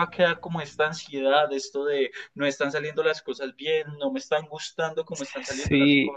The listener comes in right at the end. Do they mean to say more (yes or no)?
yes